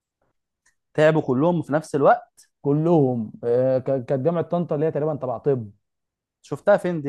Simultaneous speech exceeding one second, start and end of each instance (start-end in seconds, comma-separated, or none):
none